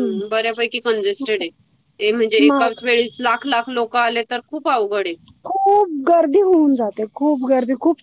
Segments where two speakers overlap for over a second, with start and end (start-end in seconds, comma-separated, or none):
none